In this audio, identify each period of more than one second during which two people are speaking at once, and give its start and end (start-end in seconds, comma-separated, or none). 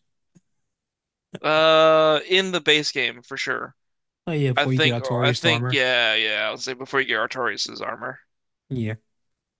4.6-5.8